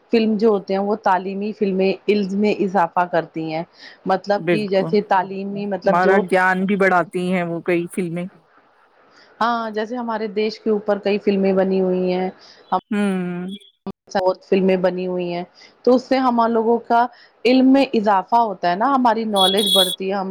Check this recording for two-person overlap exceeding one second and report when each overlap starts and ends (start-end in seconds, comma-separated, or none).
4.5-6.2